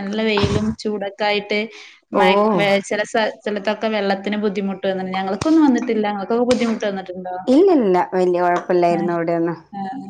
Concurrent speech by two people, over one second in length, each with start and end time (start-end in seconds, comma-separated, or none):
none